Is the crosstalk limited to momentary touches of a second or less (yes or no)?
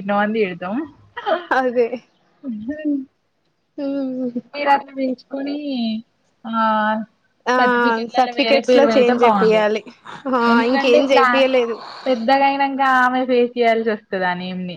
no